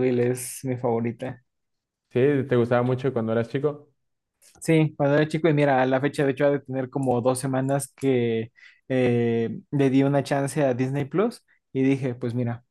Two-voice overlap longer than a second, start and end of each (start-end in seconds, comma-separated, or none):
none